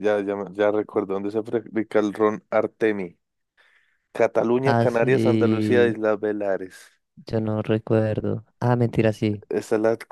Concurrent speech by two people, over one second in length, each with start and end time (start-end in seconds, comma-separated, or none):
4.6-6.0